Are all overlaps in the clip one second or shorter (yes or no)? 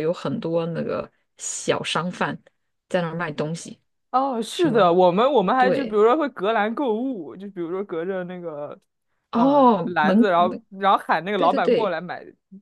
no